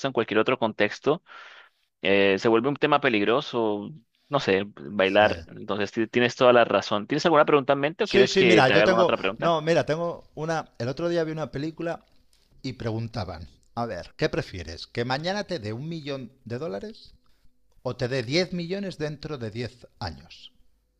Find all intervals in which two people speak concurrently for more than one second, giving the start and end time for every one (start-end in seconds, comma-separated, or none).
8.0-9.5